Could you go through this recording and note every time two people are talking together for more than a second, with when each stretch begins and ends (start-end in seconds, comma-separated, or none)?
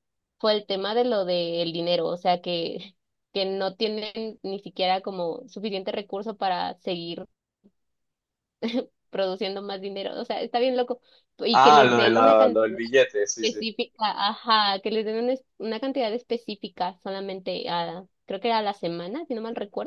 11.5-12.8